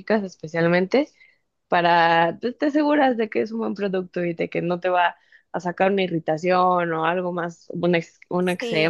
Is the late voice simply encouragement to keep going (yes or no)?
yes